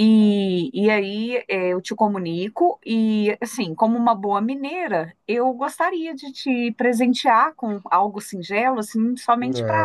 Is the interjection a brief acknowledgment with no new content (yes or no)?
no